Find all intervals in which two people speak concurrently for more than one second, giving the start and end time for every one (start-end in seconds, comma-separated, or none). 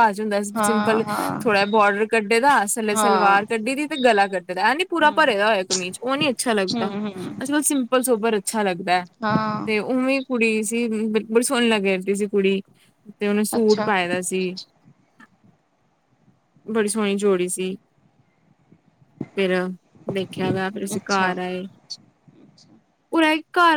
none